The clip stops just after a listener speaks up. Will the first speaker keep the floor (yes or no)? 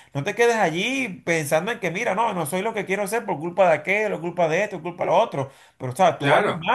no